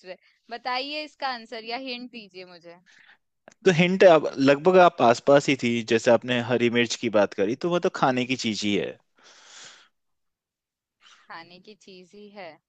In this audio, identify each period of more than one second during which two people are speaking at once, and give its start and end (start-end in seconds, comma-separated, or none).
none